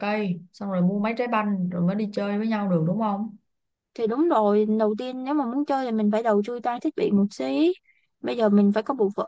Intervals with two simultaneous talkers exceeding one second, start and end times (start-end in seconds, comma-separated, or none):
none